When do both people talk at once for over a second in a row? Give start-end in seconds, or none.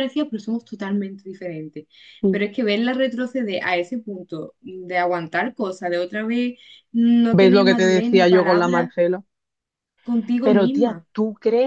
7.3-8.9